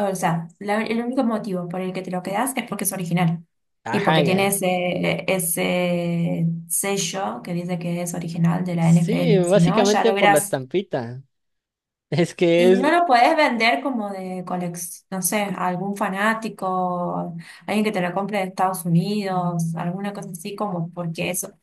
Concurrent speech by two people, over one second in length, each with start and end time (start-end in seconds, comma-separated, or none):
8.8-10.6